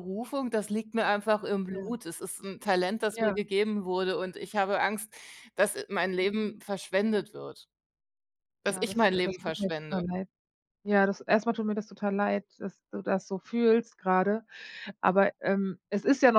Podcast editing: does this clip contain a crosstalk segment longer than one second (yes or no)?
yes